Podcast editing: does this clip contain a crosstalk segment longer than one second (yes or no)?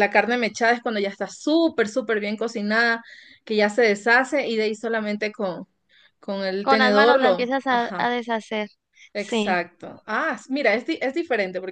yes